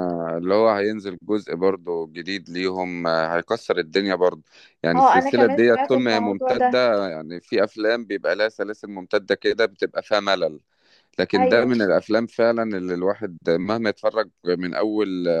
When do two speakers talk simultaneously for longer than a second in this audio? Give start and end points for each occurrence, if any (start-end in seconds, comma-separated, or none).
5.0-6.8